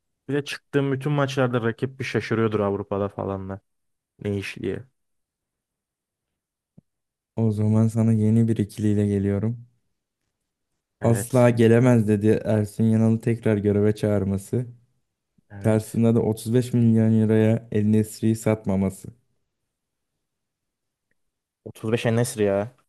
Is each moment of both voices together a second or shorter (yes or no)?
yes